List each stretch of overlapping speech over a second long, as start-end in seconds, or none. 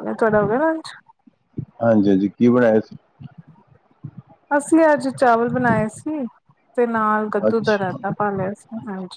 none